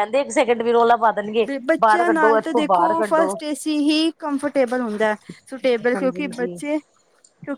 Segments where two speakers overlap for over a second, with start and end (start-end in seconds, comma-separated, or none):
1.7-3.4